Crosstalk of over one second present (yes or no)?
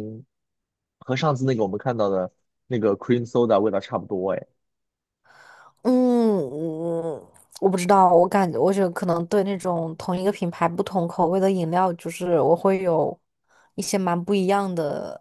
no